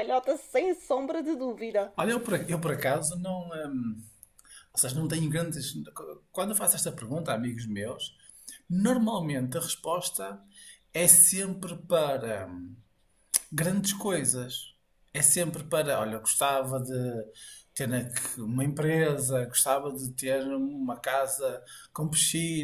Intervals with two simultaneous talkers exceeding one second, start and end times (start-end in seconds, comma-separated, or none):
none